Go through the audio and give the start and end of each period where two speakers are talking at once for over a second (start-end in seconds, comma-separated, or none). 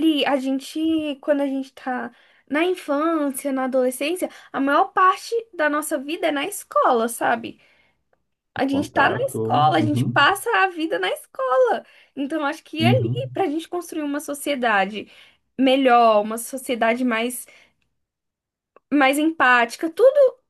8.7-10.2